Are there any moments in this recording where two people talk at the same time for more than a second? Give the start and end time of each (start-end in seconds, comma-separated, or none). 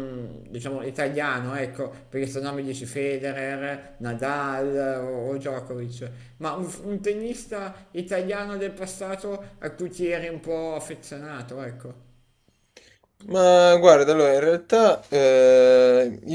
none